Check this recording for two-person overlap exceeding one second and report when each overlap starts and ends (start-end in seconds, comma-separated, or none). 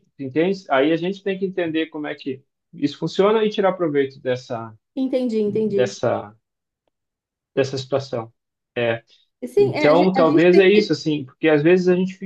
9.6-10.9